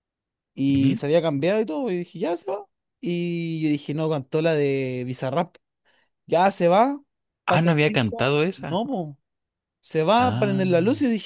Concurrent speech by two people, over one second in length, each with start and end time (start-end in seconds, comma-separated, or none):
7.5-8.8